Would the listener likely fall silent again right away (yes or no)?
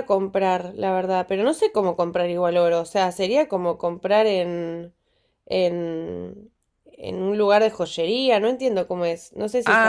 no